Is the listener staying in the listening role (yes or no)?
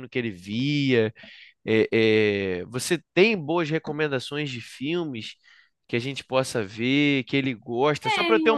yes